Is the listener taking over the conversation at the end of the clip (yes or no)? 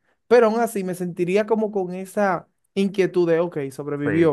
yes